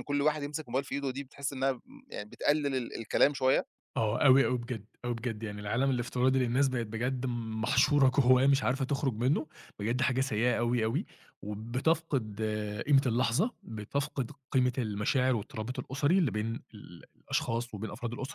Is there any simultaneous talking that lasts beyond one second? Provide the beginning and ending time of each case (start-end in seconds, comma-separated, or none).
none